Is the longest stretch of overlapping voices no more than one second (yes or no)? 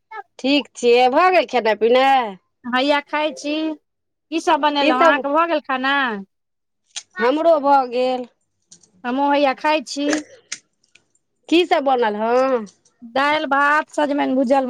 yes